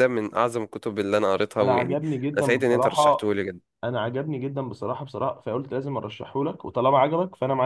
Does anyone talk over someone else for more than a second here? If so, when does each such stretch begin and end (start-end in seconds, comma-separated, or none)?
1.6-3.3